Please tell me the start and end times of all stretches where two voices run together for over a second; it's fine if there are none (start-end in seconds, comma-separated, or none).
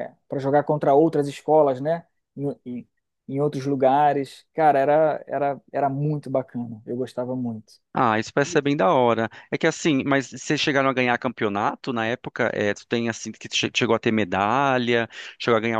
none